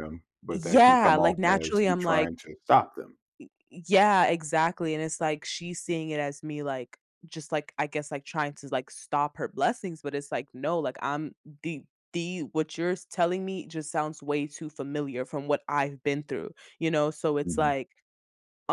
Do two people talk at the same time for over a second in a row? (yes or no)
yes